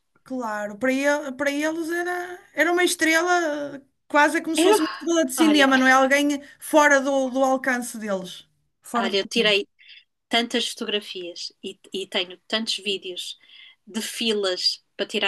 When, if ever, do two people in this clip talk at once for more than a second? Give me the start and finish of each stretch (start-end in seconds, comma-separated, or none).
none